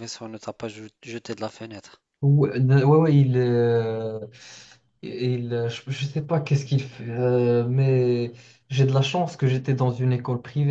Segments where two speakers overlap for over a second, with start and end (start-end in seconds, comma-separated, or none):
none